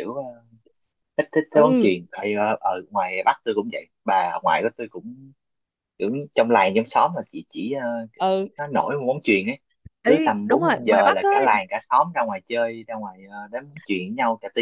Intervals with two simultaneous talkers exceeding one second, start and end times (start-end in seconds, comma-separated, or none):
10.1-11.5